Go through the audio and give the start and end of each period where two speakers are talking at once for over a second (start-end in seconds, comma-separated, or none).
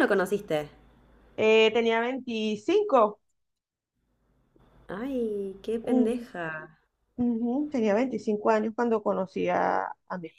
none